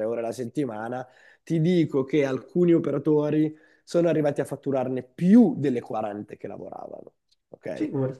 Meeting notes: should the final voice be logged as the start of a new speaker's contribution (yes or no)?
yes